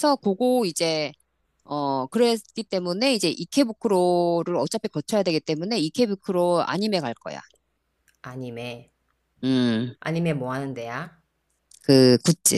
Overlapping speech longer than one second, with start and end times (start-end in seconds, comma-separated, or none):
none